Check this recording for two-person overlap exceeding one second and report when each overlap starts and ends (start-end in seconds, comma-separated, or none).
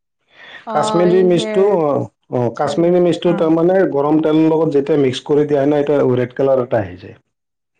3.3-4.7